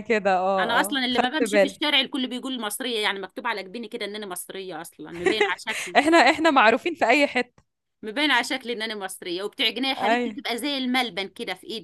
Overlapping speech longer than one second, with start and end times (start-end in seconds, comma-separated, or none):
0.6-1.8